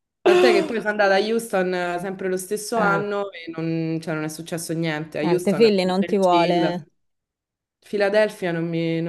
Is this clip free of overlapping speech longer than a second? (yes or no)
no